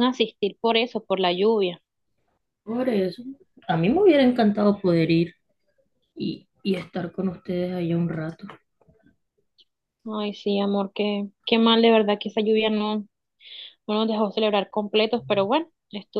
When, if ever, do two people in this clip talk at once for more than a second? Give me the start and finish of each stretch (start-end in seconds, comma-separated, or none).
none